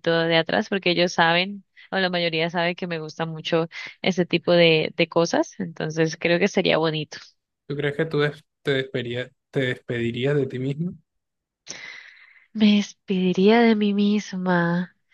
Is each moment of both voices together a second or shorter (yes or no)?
yes